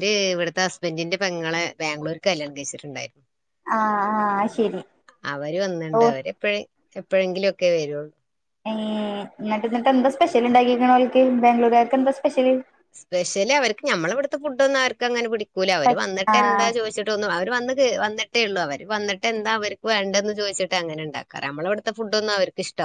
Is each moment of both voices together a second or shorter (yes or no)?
yes